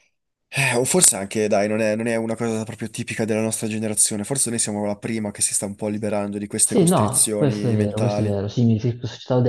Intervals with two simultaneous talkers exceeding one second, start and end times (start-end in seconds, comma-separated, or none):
6.6-8.4